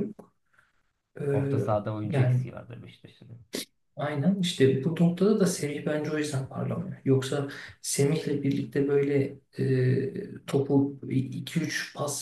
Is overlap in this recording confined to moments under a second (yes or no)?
yes